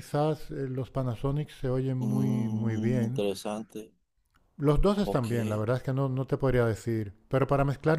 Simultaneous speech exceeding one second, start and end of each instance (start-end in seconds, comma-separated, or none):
2.0-3.2